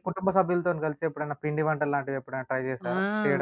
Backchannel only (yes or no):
no